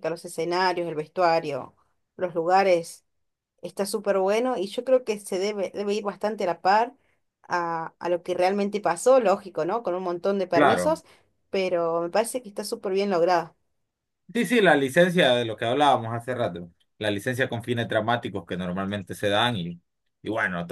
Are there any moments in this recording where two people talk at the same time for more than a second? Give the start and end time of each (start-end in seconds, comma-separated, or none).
none